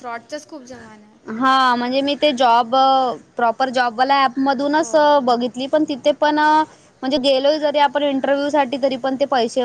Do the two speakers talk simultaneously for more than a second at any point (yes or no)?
no